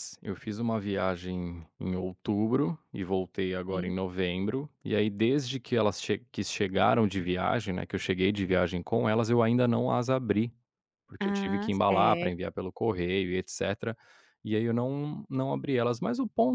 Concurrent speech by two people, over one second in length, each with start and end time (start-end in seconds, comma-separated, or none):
11.2-12.5